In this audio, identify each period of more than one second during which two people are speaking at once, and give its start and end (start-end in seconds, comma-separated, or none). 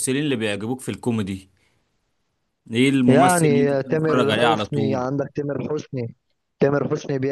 3.1-5.0